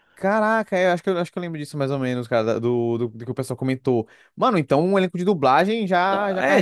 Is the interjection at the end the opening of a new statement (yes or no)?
yes